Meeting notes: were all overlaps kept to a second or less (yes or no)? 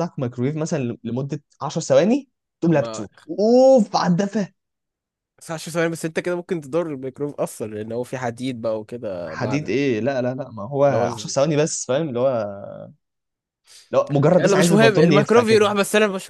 no